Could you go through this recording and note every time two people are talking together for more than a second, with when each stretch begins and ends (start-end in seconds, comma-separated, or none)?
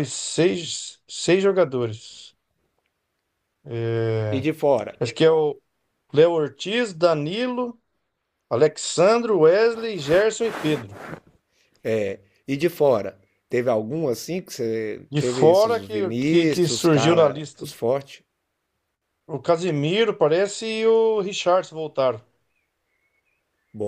15.1-17.7